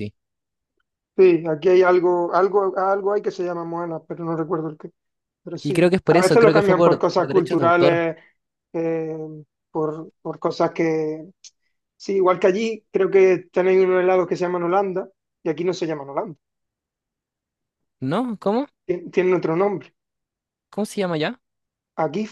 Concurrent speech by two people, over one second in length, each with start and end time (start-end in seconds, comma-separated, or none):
5.6-8.1